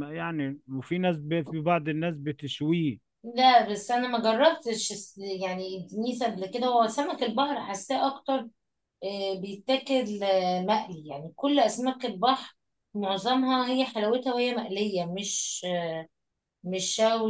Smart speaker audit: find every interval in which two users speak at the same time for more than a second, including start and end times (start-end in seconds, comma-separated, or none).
none